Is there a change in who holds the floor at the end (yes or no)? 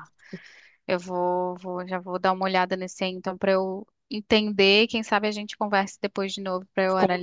yes